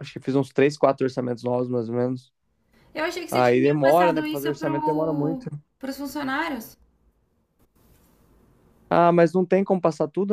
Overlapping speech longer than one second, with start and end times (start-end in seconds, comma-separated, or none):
3.3-5.5